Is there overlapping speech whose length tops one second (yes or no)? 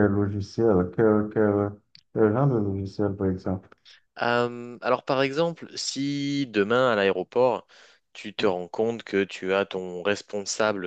no